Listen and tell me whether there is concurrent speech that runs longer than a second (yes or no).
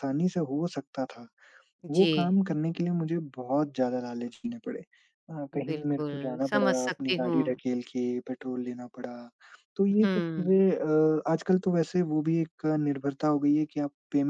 yes